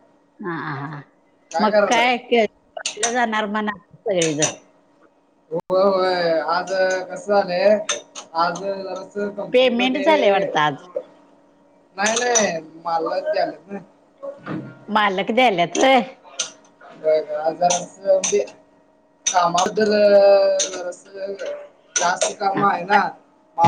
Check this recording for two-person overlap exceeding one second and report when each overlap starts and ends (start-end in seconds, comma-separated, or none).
9.5-10.9